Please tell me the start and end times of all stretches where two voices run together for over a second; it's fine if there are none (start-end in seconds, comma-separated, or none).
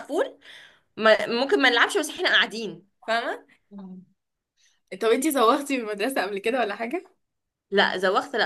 none